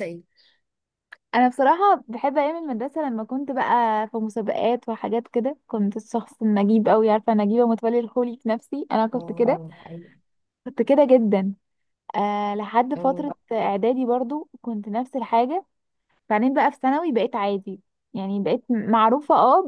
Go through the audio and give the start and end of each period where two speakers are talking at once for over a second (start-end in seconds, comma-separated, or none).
none